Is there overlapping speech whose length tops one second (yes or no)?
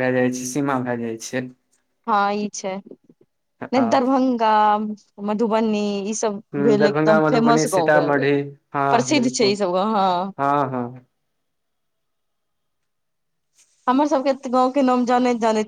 yes